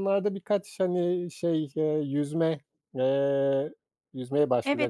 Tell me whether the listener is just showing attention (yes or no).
no